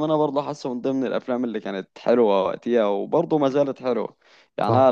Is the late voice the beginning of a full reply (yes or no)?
no